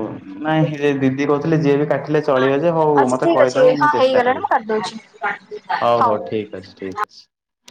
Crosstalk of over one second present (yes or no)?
yes